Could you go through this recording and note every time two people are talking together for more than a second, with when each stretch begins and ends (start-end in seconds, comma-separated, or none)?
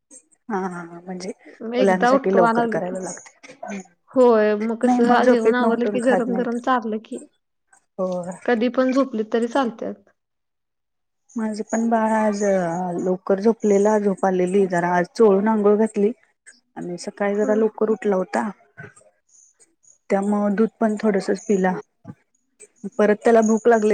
1.8-3.0, 4.8-6.5